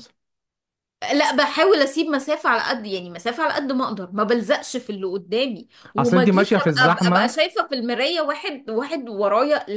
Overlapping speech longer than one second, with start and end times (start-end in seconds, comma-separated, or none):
6.0-7.4